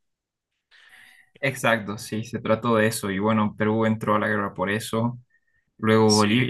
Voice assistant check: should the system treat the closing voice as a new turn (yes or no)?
no